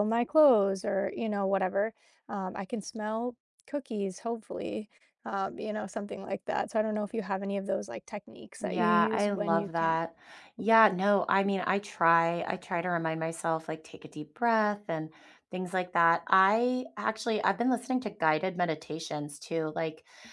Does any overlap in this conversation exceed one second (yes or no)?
yes